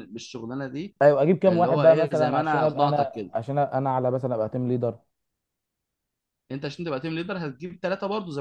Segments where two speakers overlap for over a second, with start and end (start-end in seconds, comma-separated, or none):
1.5-3.3